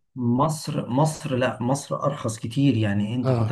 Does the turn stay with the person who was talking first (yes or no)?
yes